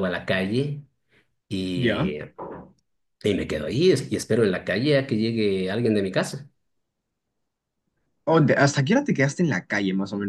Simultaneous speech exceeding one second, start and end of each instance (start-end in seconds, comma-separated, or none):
none